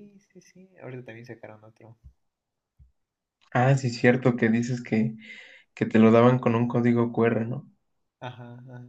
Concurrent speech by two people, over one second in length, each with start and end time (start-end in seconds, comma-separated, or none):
none